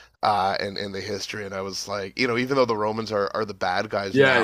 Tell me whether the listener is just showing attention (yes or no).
no